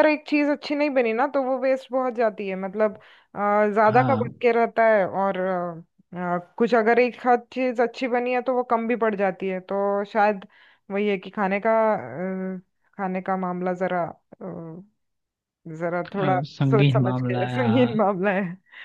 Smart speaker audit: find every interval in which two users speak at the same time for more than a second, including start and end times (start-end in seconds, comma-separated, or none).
16.1-17.9